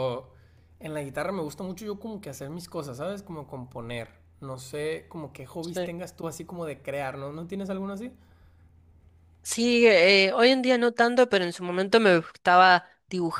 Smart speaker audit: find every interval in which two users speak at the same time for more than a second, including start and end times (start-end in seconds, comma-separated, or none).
none